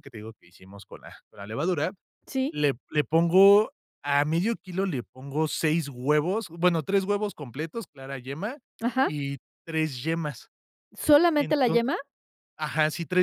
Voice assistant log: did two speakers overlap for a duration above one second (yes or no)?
no